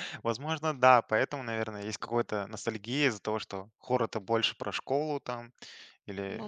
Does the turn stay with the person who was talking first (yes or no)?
yes